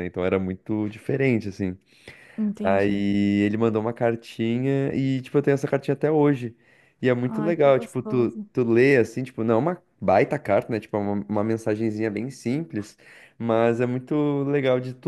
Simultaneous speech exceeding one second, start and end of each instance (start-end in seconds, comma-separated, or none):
7.2-8.5